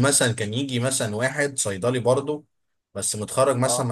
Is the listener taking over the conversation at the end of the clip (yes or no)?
no